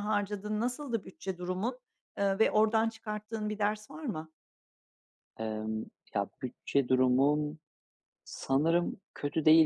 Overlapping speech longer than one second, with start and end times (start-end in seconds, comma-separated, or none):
none